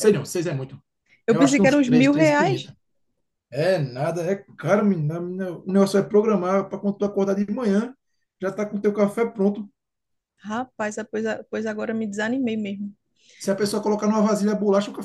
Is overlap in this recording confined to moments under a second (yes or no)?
no